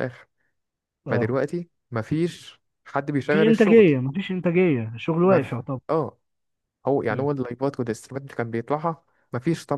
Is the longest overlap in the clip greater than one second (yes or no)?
no